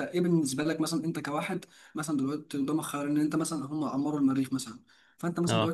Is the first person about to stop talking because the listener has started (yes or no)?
no